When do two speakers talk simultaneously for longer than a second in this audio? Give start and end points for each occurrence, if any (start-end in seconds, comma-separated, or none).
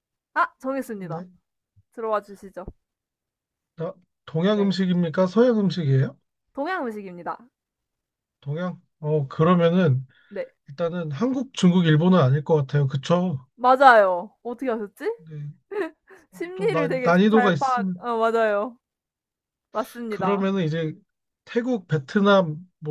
16.6-18.1